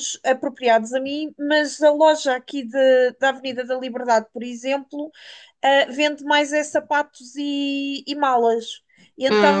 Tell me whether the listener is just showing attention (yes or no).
yes